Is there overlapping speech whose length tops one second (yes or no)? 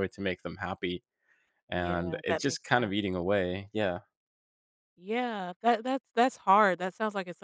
yes